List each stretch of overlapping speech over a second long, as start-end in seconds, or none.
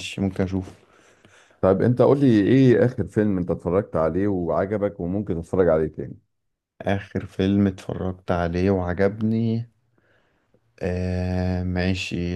none